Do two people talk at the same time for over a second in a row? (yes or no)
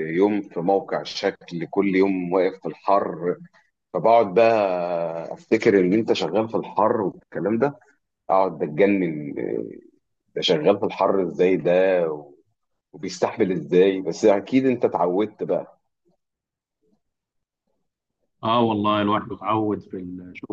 no